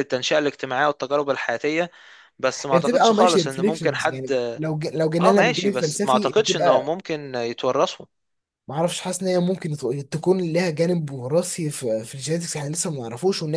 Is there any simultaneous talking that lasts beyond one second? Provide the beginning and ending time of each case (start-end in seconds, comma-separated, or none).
2.7-4.3, 5.2-6.9